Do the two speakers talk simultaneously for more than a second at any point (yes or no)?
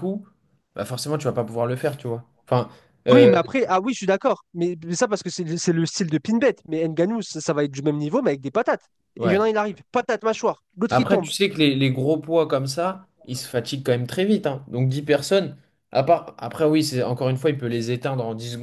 no